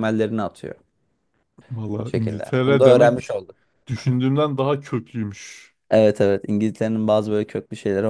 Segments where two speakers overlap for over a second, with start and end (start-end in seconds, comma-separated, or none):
2.0-3.4